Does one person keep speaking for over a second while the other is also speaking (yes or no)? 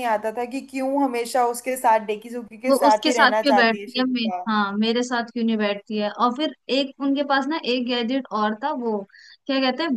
yes